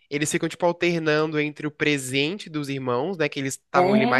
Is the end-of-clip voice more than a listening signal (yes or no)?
no